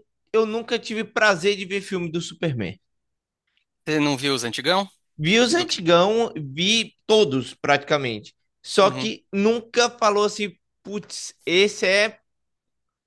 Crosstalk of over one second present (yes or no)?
no